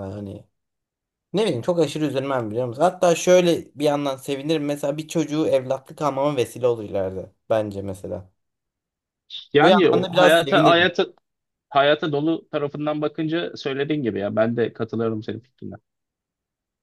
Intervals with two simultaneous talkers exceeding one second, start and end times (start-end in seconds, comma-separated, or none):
9.6-10.9